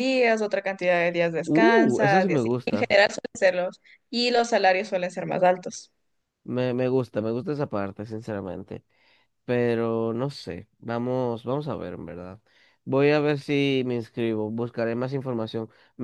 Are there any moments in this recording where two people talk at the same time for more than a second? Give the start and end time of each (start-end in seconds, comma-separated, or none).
1.5-2.9